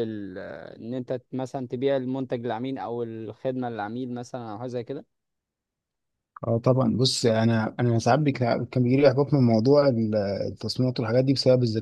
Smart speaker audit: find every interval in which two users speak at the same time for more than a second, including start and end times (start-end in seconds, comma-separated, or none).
none